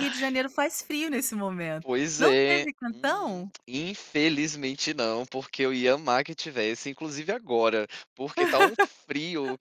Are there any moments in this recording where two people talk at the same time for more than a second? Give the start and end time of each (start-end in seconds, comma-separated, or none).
1.8-3.5